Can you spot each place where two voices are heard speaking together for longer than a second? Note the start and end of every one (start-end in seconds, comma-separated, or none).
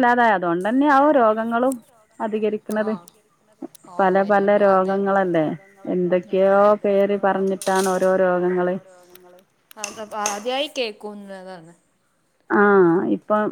6.7-8.7